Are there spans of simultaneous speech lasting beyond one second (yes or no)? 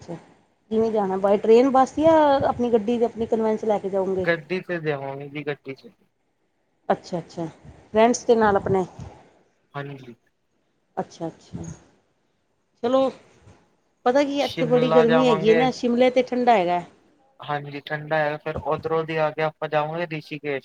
yes